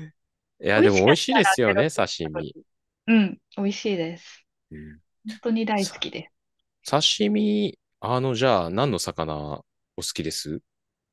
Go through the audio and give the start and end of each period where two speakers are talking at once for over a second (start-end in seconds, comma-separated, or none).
0.7-2.6